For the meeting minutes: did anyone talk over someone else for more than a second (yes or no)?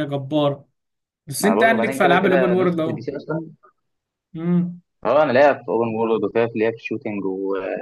yes